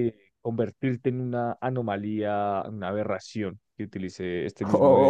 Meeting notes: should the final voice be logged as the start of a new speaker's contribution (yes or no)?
yes